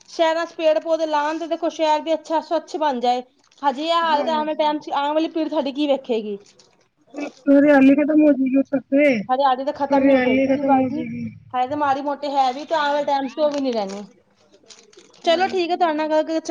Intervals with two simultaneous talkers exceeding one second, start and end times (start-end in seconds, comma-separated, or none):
none